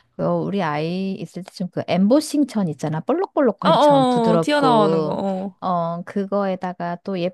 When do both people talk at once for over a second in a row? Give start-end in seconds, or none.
3.6-5.2